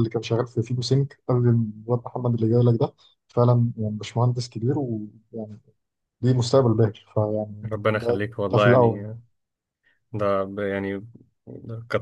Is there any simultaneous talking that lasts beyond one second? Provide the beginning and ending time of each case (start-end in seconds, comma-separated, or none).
7.7-9.1